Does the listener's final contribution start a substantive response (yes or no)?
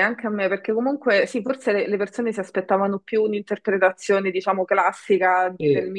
no